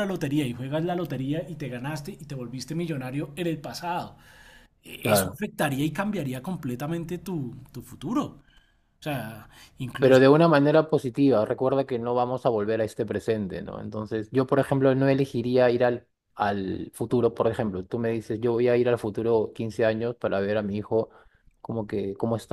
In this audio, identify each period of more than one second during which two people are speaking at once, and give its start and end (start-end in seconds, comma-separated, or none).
none